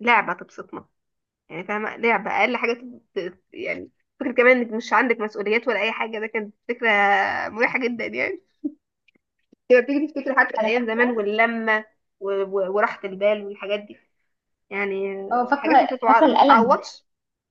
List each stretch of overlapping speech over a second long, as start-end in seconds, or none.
15.3-16.8